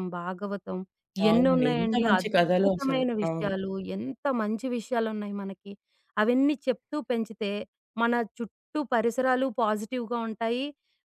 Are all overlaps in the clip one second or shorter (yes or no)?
no